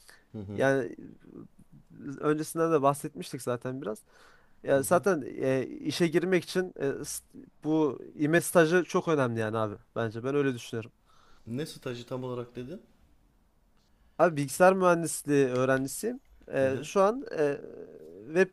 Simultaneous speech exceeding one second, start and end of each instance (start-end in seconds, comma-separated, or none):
none